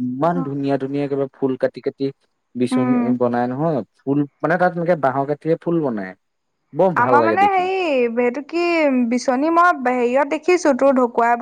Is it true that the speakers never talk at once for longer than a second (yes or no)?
yes